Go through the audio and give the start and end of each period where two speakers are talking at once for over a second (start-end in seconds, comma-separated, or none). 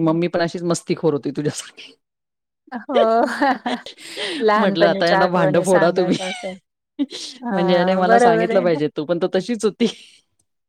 4.6-6.2